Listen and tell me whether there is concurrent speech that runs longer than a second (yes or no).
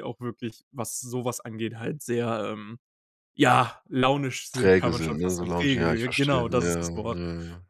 yes